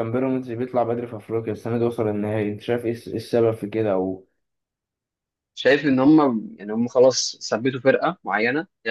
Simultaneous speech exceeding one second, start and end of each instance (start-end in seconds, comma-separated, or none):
none